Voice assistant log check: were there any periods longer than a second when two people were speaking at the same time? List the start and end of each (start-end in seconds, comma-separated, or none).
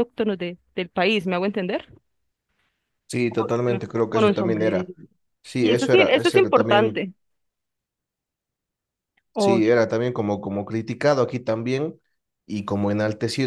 3.3-4.9, 5.6-7.1